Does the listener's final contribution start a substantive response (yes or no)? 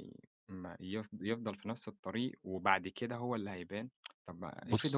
no